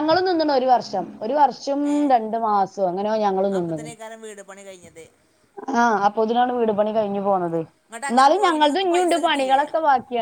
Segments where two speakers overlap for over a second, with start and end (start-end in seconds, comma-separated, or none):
8.1-9.6